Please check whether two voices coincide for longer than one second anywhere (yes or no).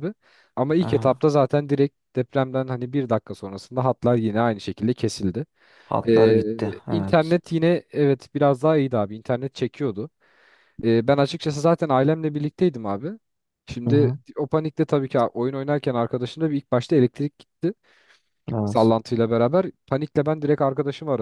yes